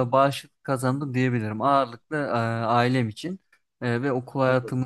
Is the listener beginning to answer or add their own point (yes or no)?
no